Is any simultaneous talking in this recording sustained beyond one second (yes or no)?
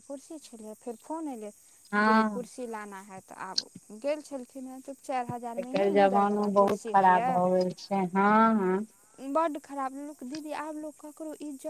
yes